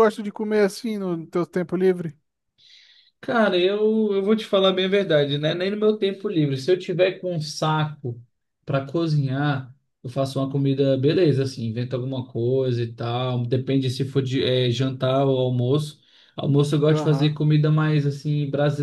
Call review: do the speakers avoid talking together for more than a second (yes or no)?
yes